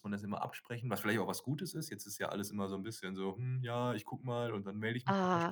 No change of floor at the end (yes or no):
no